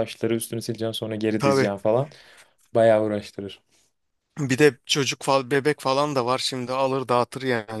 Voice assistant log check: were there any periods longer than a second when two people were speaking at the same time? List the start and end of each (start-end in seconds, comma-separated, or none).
none